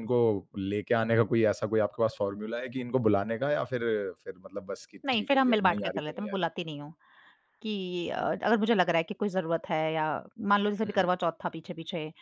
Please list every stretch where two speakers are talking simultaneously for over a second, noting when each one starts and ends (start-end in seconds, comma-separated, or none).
5.0-6.5